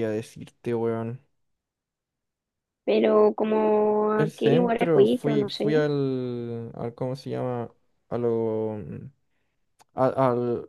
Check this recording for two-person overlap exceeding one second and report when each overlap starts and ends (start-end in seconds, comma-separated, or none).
4.2-5.9